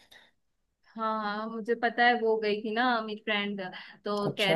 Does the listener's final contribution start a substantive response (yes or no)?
no